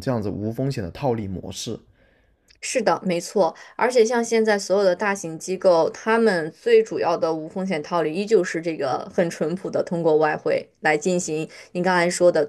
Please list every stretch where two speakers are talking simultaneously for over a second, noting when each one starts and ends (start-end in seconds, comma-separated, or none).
none